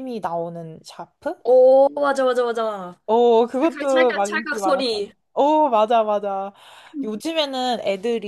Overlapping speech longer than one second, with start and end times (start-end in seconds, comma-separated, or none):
3.6-5.1